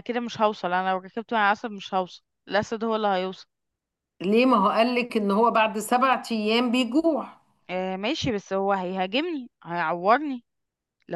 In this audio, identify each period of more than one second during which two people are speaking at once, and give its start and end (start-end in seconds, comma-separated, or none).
none